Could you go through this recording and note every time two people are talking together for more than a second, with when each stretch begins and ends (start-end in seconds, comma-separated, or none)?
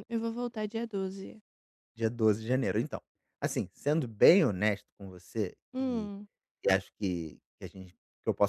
none